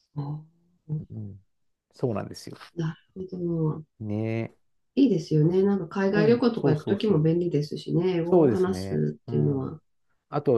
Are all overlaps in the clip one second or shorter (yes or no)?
no